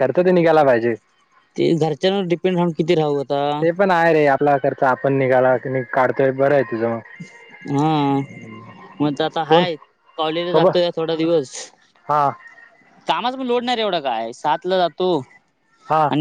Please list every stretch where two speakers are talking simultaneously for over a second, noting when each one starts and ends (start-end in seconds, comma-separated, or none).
none